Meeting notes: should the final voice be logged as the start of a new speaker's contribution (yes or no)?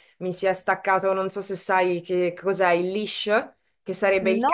no